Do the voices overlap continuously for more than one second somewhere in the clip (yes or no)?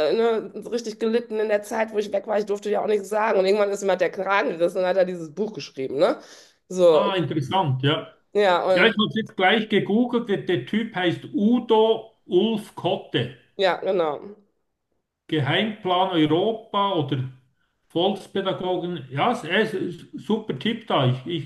no